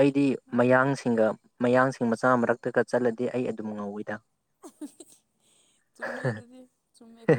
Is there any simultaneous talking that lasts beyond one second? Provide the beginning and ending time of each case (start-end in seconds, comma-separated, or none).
none